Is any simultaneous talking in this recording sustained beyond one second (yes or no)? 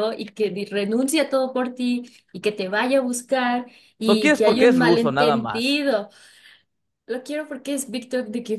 yes